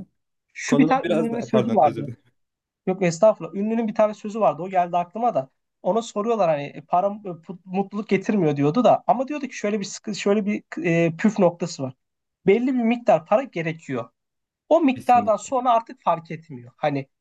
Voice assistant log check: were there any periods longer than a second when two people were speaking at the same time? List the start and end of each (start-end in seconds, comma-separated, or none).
0.7-2.1